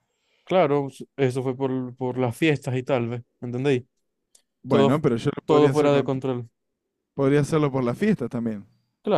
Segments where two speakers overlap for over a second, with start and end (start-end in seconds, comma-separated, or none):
4.7-6.3